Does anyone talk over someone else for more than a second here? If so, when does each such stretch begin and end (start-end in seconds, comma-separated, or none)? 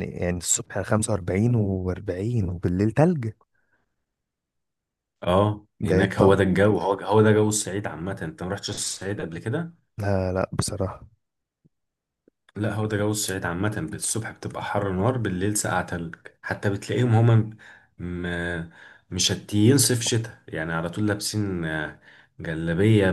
none